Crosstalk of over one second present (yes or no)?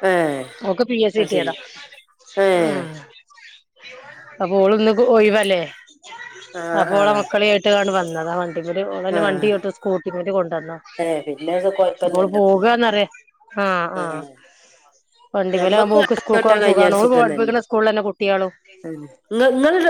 yes